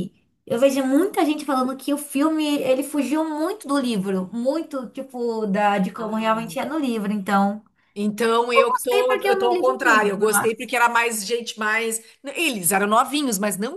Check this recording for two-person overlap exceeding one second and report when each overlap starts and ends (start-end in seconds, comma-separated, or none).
8.6-10.7